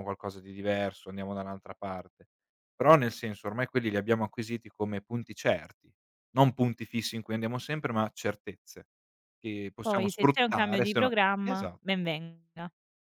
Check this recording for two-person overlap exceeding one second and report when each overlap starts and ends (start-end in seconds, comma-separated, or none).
9.8-11.8